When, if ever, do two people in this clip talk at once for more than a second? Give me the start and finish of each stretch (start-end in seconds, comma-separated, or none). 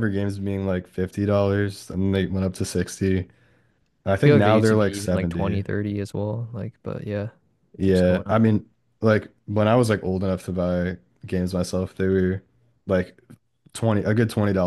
4.2-5.6